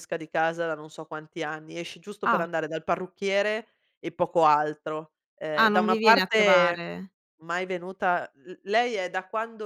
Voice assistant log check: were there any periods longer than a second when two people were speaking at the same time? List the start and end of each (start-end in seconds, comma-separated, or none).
5.6-6.9